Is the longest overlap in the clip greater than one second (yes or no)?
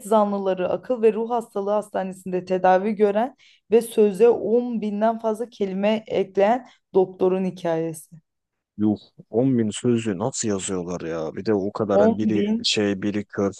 no